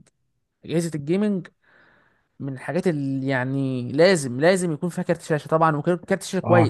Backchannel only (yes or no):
no